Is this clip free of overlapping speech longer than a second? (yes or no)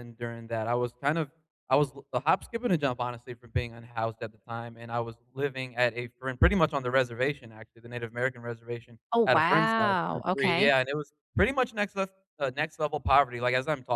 no